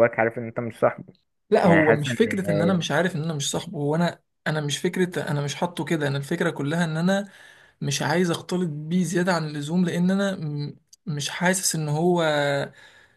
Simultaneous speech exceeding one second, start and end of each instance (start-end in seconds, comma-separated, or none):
1.6-2.9